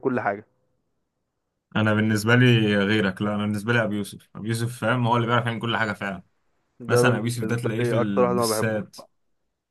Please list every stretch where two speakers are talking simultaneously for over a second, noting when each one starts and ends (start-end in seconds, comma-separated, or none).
6.9-9.0